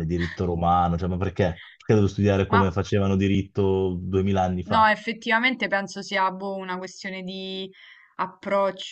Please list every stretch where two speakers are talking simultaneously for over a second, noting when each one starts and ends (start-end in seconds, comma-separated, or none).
none